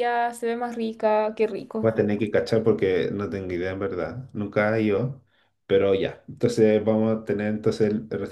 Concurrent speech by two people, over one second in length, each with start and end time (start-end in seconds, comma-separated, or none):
none